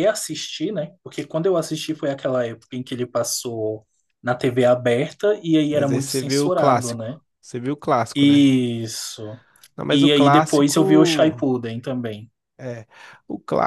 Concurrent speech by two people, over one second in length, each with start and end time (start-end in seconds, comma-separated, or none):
5.7-7.2, 9.9-11.4